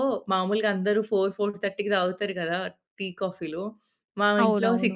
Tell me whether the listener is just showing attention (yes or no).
yes